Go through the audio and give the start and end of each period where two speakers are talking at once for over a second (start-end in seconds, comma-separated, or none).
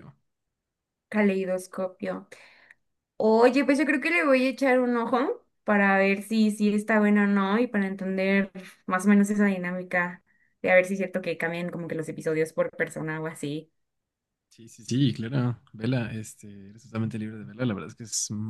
none